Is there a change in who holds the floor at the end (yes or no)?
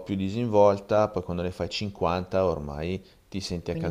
yes